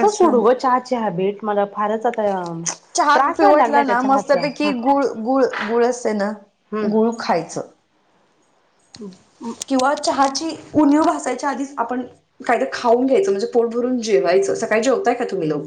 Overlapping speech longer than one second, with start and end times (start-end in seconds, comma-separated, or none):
3.1-4.7